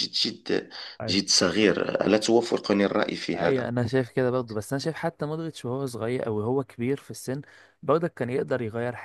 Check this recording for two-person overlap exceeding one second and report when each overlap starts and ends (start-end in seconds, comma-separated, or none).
none